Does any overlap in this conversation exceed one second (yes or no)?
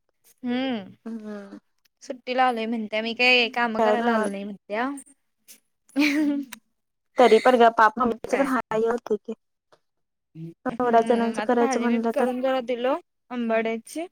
yes